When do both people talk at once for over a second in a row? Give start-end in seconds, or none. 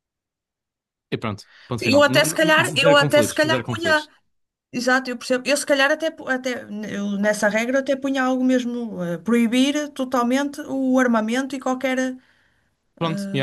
1.8-4.1